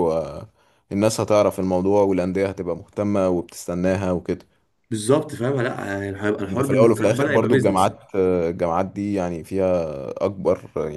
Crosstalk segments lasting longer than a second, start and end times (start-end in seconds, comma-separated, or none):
6.5-7.9